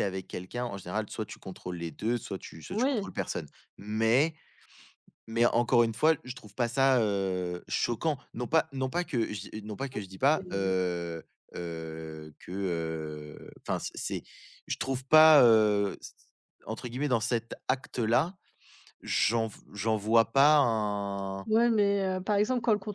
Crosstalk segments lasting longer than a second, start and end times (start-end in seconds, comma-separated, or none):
none